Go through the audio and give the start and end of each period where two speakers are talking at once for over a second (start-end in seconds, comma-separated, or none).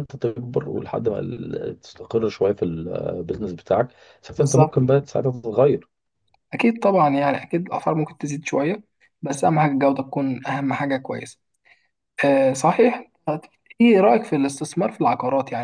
none